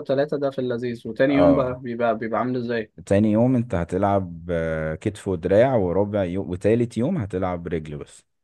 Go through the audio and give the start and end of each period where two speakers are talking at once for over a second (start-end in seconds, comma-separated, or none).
none